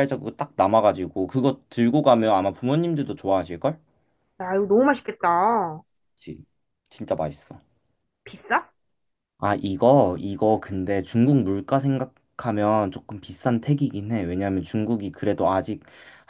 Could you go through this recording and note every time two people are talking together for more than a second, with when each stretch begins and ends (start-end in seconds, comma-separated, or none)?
none